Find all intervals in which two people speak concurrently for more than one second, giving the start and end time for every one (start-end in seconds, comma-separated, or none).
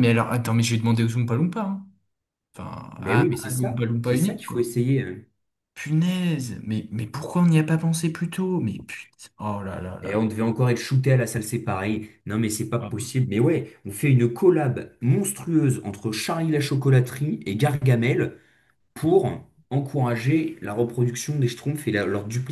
3.0-4.7